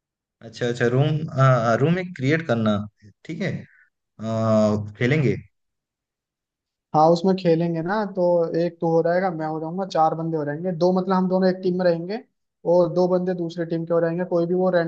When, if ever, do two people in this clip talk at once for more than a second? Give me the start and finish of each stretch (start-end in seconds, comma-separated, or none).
none